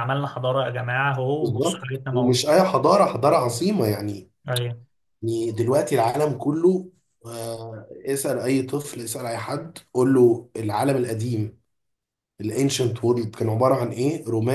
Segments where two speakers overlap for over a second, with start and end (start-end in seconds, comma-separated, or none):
1.3-2.7